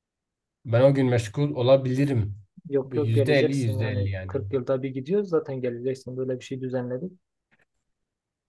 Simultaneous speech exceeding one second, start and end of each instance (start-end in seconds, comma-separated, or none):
2.8-4.3